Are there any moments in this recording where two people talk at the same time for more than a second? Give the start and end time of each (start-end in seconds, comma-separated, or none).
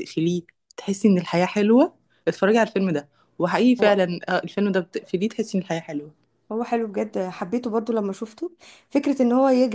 none